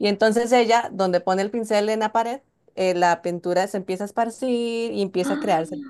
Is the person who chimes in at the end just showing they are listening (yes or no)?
yes